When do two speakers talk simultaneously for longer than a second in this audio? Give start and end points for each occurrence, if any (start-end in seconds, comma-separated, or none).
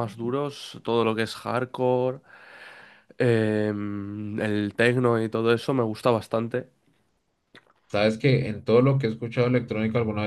none